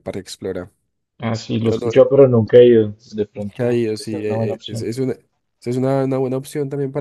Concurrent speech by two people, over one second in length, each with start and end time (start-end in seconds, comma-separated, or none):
3.4-4.9